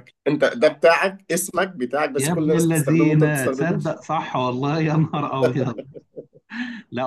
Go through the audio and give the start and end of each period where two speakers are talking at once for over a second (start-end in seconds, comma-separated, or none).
2.2-3.8